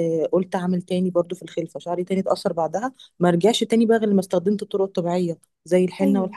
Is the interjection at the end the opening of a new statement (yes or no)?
yes